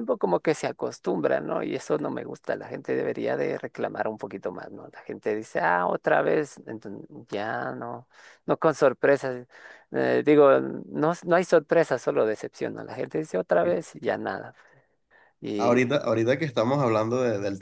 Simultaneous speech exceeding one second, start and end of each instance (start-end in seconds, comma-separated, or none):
none